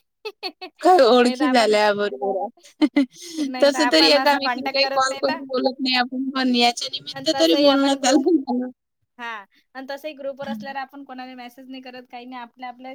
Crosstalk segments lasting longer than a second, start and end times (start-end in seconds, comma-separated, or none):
3.6-5.4